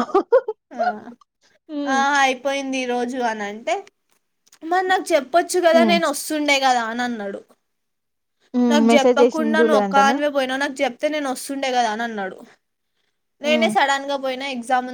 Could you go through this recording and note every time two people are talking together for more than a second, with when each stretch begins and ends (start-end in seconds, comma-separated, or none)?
8.7-10.2